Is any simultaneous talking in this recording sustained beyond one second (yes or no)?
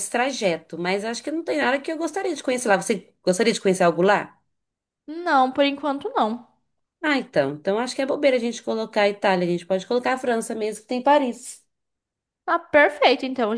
no